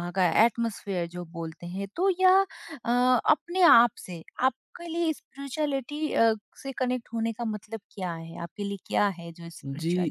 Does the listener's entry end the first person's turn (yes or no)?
yes